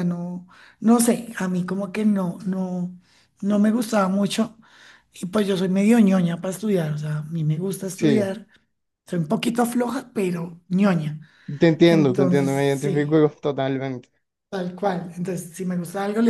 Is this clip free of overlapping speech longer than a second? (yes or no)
no